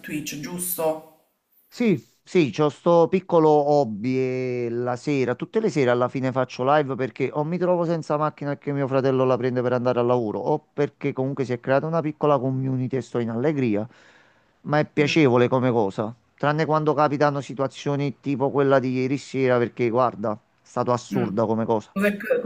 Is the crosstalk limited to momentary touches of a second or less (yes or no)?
yes